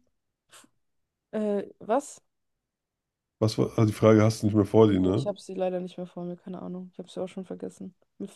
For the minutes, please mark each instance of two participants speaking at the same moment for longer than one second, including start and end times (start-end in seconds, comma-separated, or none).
none